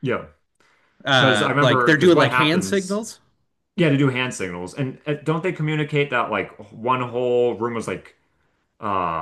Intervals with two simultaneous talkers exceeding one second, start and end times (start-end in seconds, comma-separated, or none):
1.1-3.0